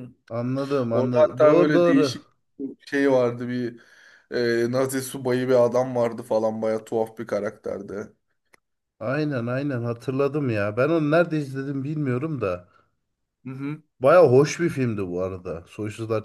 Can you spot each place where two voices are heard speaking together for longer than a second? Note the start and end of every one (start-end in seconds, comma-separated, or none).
0.9-2.2